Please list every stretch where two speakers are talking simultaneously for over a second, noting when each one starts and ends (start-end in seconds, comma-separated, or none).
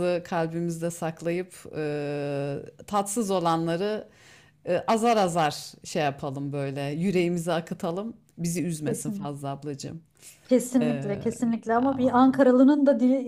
none